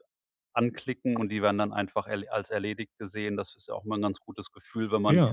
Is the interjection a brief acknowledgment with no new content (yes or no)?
yes